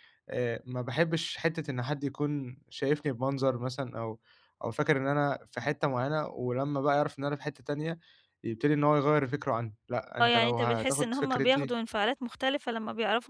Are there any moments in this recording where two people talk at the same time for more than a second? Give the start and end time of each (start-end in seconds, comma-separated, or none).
10.2-11.7